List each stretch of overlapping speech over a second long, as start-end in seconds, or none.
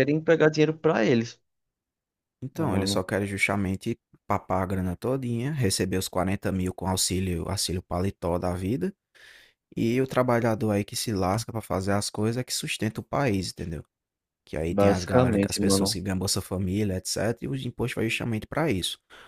14.7-16.0